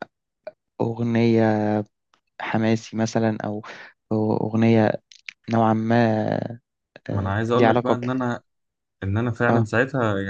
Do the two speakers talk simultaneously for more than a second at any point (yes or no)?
no